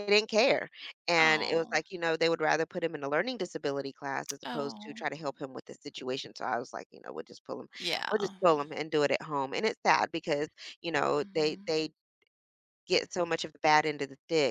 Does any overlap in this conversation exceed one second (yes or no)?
no